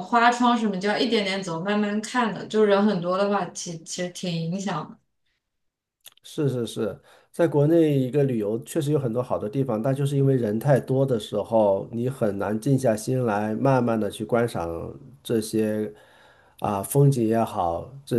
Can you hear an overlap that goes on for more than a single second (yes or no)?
no